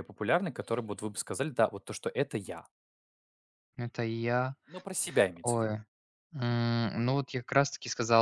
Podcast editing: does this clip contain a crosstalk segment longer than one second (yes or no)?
no